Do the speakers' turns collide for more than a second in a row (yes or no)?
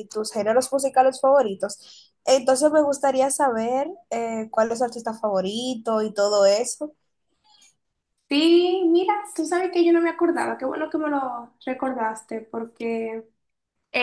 no